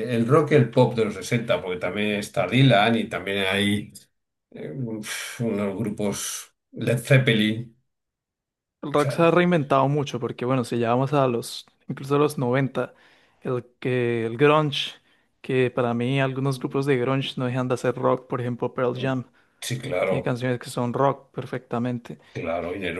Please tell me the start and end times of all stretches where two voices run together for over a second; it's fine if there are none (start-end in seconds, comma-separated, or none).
none